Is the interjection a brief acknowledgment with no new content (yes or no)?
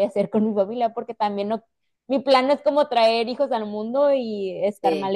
no